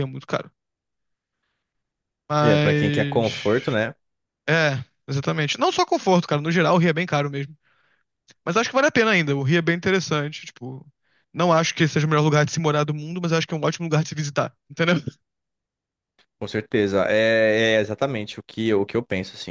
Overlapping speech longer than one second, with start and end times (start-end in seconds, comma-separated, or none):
2.4-3.8